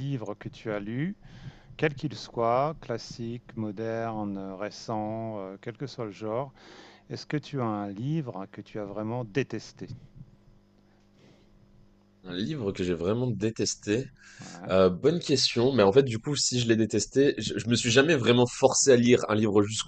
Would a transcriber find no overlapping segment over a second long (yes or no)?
yes